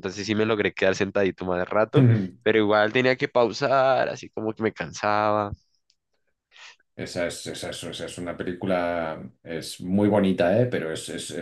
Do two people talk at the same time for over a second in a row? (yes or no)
no